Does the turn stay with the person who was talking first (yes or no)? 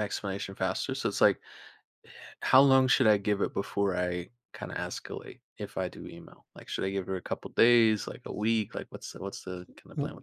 no